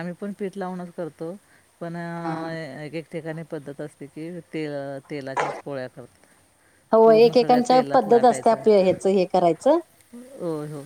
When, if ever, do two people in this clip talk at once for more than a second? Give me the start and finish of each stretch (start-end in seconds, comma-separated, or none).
7.0-8.6